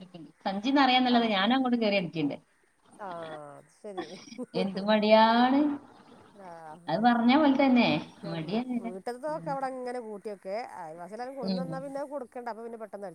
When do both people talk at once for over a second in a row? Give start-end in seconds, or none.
none